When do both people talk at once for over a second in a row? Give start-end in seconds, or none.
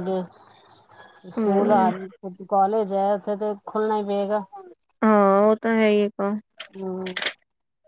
none